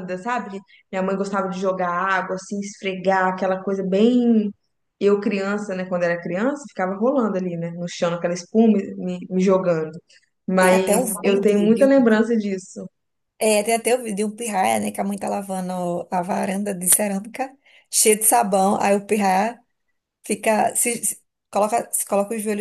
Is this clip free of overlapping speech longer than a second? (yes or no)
no